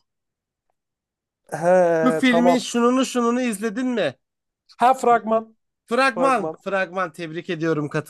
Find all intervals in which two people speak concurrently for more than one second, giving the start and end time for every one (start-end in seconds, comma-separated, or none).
none